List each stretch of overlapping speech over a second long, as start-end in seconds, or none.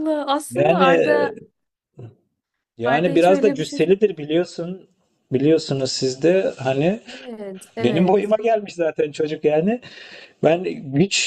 2.8-4.3